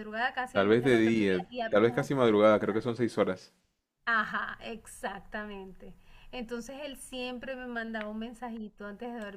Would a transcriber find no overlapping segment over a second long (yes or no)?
no